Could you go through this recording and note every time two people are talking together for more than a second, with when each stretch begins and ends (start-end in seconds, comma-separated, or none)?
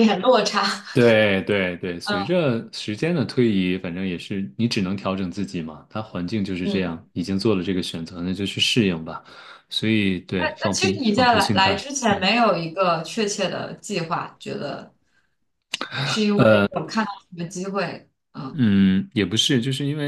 10.4-12.2